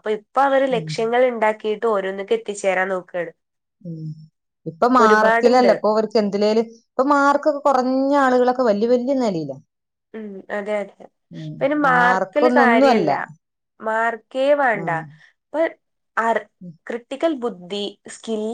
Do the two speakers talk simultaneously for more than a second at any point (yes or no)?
yes